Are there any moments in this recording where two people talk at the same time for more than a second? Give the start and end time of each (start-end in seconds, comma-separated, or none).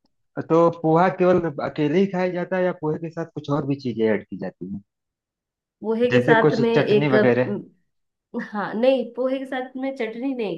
6.1-7.6